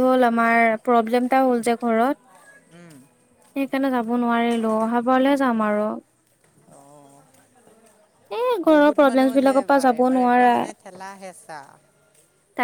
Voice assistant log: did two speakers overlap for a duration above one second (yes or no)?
yes